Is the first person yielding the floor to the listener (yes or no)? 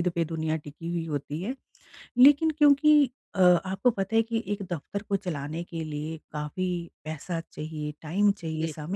no